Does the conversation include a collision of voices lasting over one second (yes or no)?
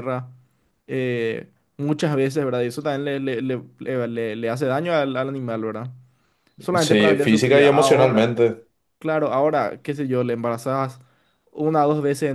yes